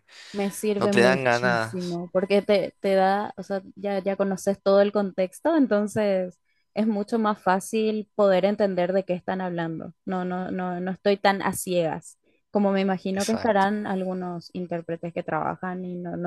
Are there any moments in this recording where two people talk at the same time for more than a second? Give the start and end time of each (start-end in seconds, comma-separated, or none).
0.8-2.0